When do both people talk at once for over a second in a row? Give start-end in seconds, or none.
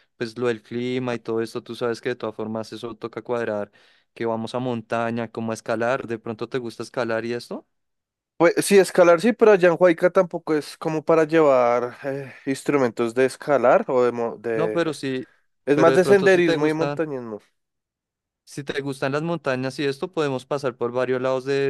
15.7-17.0